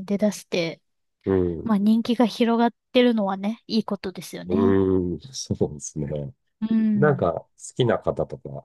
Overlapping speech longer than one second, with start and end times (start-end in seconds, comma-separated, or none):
none